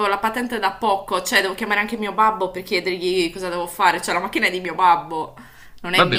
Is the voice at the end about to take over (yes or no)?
yes